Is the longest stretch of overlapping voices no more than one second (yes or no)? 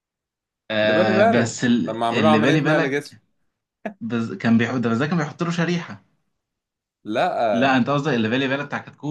no